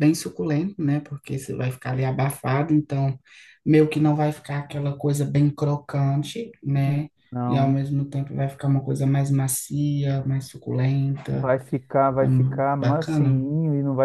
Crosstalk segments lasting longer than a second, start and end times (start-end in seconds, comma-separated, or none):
12.2-13.5